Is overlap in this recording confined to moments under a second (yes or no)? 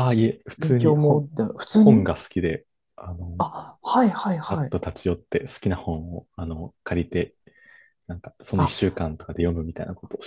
no